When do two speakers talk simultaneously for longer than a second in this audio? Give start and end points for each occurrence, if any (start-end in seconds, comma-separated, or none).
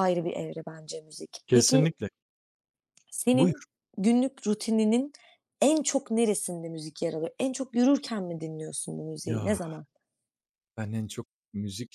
none